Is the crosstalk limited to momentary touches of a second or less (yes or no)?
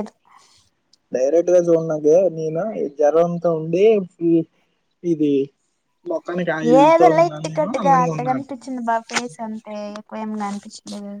no